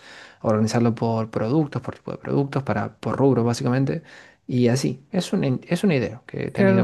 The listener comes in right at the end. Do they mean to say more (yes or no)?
yes